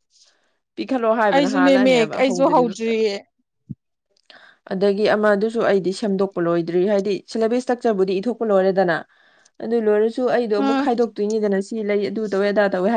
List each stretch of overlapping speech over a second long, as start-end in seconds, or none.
1.3-2.9